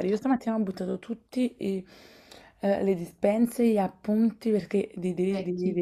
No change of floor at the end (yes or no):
yes